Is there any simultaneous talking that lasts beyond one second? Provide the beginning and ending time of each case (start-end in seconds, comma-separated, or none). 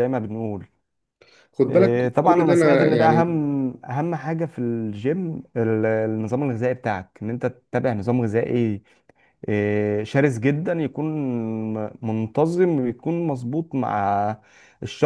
1.7-3.4